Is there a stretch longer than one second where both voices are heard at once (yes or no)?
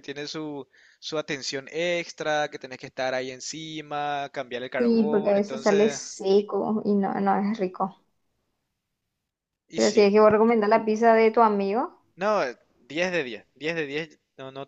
yes